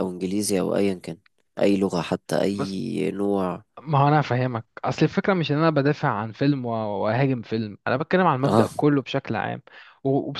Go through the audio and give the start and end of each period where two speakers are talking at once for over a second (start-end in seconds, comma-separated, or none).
none